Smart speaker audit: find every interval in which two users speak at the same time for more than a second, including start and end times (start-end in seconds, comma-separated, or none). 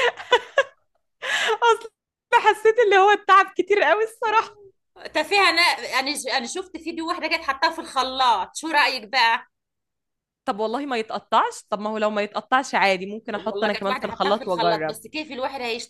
13.3-14.9